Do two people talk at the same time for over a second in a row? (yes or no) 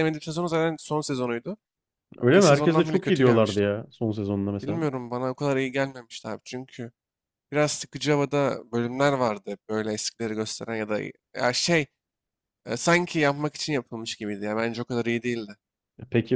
yes